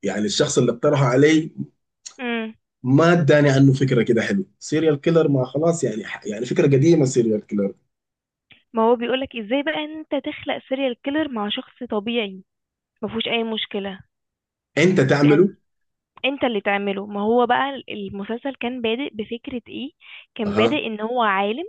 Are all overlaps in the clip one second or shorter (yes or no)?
yes